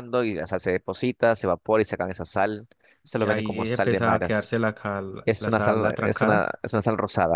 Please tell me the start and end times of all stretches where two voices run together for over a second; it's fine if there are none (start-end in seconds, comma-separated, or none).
3.1-4.6, 5.2-6.6